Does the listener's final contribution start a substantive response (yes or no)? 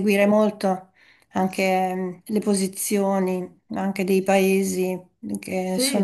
no